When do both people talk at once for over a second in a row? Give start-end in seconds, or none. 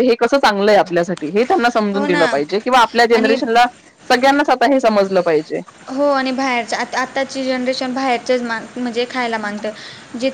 none